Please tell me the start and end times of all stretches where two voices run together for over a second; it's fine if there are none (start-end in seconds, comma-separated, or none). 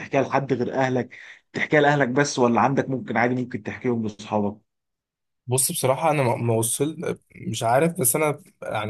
none